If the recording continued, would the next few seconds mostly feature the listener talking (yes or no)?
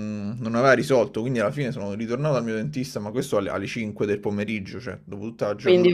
yes